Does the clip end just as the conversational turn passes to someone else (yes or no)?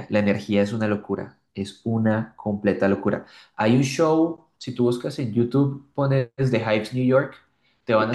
no